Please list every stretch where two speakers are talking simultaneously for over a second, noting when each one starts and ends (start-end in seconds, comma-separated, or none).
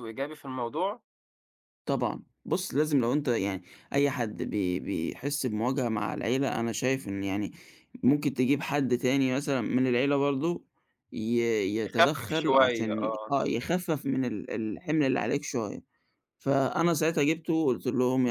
11.8-13.3